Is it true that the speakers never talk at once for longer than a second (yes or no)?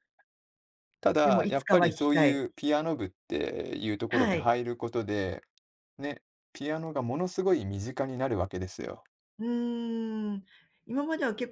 no